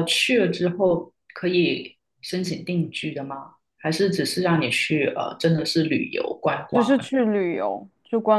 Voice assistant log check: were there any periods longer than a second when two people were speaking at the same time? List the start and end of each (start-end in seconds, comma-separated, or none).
none